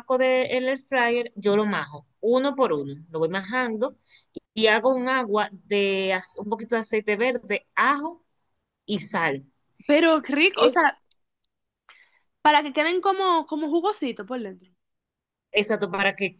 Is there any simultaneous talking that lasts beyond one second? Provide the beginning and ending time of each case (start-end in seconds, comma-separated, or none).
none